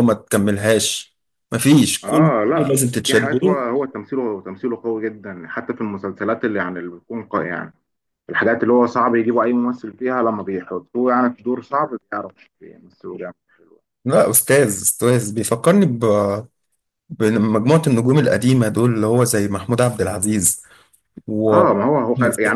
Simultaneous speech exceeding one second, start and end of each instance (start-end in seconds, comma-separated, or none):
2.0-3.6